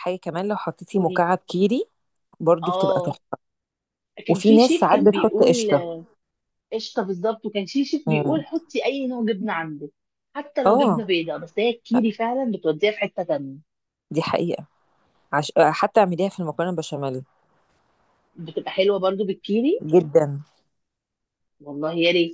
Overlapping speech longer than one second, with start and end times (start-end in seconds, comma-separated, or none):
4.3-5.7